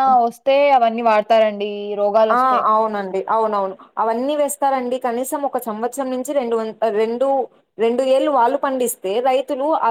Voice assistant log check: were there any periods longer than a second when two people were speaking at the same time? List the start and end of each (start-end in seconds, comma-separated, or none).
none